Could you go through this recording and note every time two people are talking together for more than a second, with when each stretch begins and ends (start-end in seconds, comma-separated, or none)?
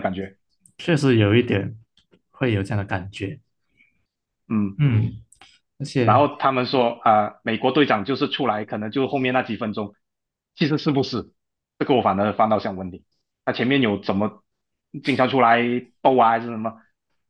none